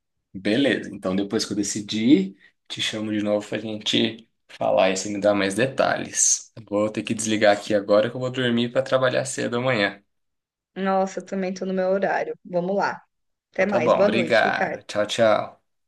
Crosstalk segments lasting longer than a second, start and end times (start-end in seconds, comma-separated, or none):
13.5-14.8